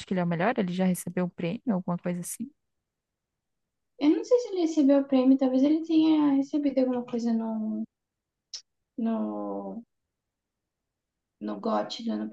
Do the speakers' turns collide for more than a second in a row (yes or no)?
no